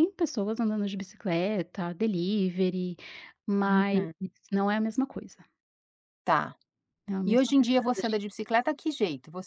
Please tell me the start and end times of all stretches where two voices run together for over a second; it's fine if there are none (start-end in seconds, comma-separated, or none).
none